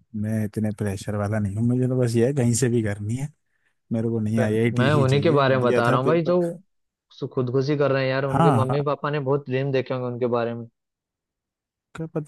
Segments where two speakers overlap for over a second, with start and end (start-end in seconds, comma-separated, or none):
4.4-6.4